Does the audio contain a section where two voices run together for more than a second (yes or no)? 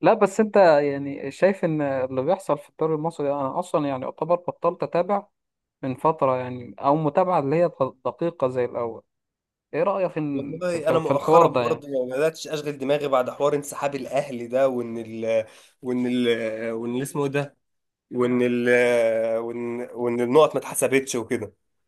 yes